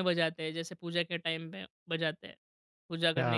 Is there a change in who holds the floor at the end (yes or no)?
yes